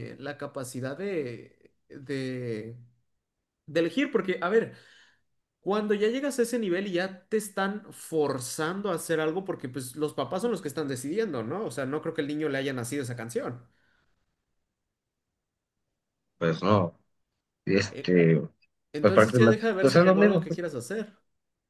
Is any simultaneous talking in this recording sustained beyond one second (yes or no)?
yes